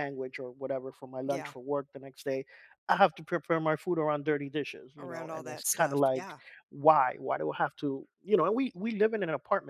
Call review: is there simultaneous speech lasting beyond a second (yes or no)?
yes